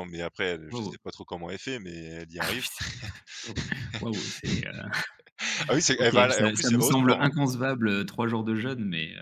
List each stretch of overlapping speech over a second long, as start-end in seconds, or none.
6.0-7.4